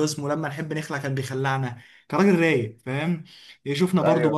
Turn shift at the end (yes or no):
no